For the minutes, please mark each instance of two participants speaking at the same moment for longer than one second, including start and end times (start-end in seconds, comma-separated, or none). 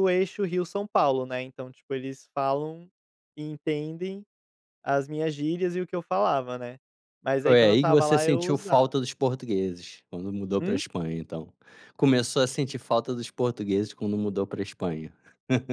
7.4-9.0